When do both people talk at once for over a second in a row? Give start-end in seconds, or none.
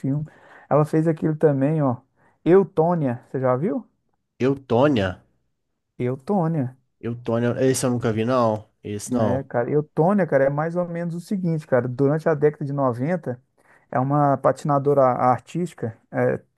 none